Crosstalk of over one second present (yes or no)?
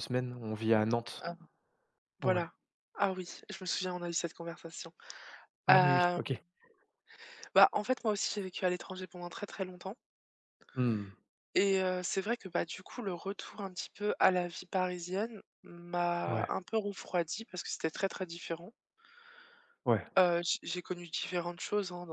no